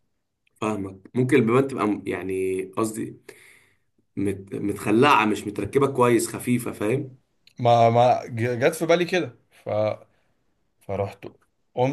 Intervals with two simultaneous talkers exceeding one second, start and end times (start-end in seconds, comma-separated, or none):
none